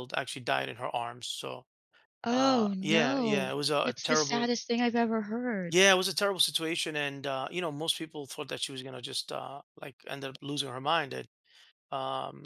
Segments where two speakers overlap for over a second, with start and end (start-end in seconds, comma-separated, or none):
2.3-4.5